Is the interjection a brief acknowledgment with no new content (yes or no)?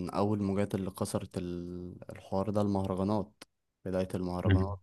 yes